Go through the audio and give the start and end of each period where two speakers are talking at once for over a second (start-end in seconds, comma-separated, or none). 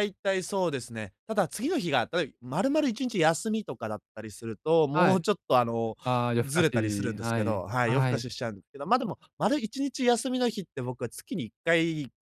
6.5-8.3